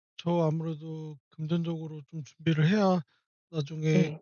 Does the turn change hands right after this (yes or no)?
no